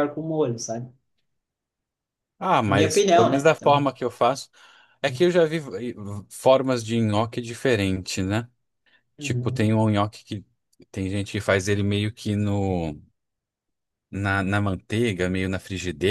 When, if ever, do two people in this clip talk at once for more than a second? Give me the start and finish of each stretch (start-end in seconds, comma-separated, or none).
2.6-3.9